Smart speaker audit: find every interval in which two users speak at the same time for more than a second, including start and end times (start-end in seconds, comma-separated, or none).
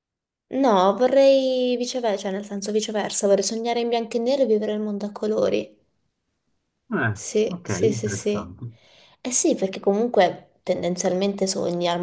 7.1-8.6